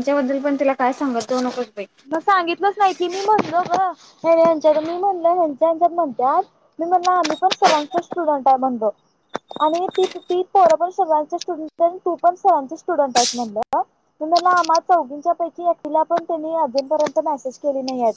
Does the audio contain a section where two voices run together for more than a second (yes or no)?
no